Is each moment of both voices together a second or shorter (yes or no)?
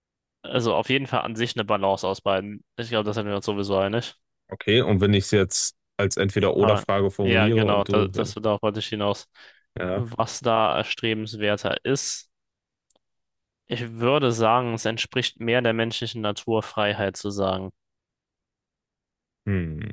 no